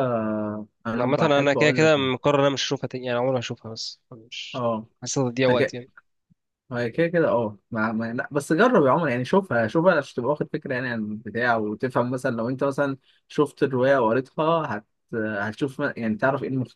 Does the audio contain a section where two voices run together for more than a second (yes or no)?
yes